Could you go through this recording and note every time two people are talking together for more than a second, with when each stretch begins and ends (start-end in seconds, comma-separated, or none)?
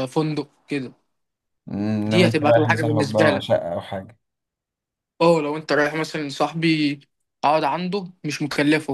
2.0-3.5